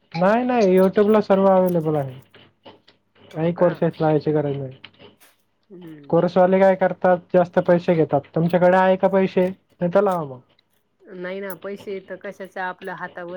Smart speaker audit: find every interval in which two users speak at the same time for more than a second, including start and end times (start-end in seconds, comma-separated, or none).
none